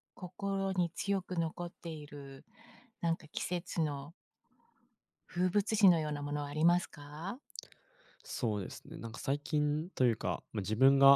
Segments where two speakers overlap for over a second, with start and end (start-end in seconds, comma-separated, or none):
none